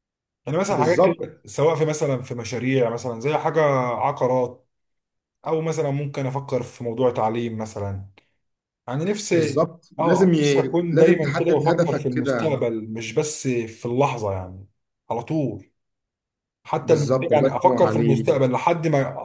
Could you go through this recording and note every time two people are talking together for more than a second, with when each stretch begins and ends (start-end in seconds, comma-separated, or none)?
9.3-12.6, 16.8-18.3